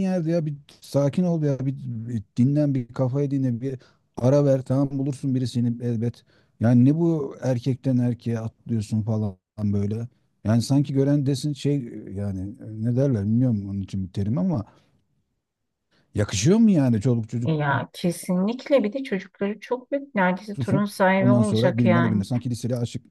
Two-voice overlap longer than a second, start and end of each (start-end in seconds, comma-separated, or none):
20.5-22.3